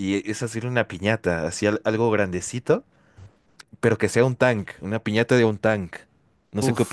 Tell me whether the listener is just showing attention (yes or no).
no